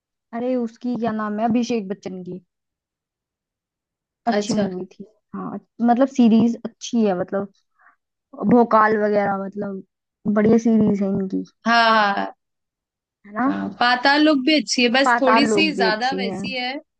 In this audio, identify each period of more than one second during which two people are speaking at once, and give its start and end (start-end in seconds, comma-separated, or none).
15.0-16.4